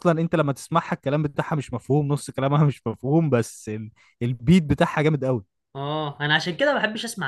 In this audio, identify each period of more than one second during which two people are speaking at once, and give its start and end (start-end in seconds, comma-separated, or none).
none